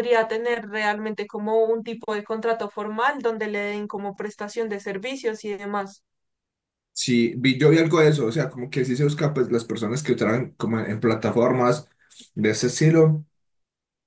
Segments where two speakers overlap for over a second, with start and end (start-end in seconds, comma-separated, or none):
none